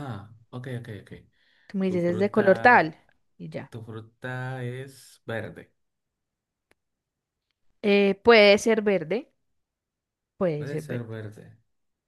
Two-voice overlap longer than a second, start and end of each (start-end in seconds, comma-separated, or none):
none